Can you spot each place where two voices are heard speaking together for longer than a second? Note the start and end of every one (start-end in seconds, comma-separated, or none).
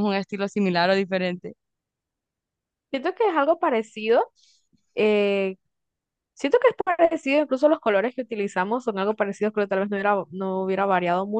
none